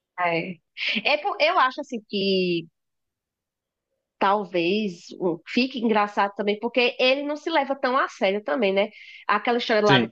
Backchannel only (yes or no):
yes